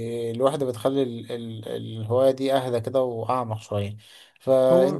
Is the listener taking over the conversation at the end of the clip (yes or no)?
no